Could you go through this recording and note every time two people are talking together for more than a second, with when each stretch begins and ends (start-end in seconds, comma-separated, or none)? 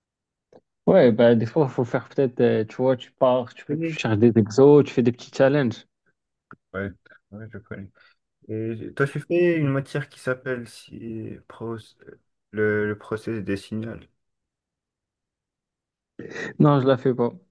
none